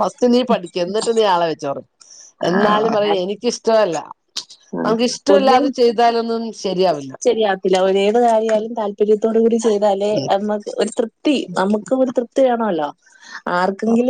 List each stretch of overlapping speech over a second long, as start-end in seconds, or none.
none